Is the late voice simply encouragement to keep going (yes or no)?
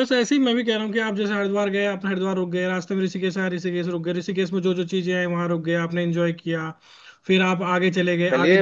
no